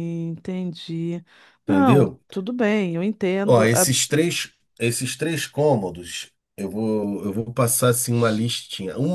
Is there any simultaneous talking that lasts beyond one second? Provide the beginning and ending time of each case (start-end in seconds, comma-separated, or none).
none